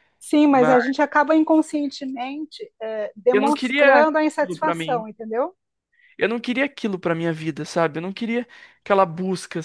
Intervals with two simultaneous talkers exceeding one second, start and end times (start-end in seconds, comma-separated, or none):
3.3-5.1